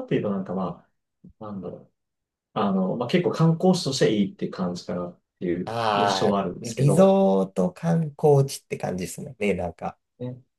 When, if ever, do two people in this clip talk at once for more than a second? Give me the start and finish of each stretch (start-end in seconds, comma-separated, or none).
5.6-7.2